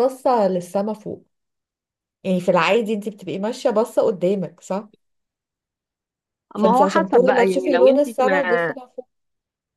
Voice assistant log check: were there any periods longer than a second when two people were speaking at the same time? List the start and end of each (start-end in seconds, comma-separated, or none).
6.5-8.8